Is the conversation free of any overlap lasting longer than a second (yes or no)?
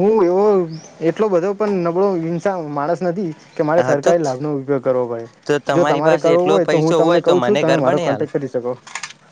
no